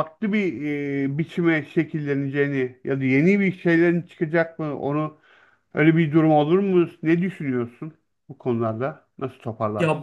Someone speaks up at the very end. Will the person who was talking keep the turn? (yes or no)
no